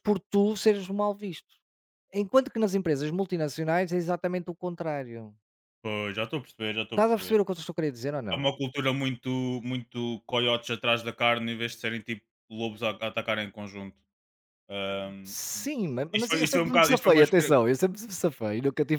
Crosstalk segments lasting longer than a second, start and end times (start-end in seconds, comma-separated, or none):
16.1-17.6